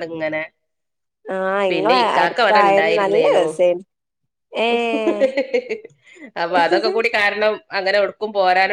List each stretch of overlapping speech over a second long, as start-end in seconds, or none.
1.7-3.4